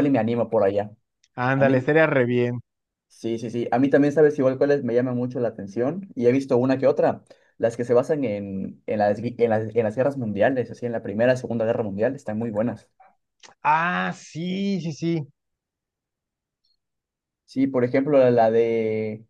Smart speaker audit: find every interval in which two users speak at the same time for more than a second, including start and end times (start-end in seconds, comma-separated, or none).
none